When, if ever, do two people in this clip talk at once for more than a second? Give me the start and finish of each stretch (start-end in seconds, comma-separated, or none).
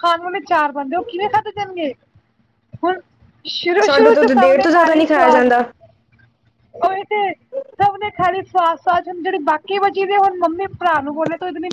4.0-5.5